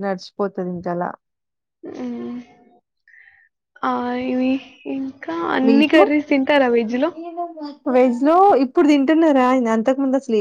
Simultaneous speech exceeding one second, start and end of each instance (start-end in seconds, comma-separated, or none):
none